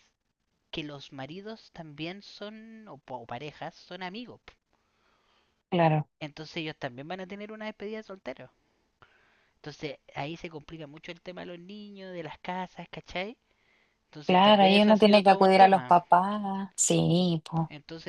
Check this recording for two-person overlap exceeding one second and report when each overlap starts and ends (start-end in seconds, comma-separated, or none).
14.2-15.9